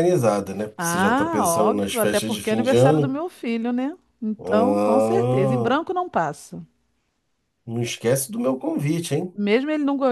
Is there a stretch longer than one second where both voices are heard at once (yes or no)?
yes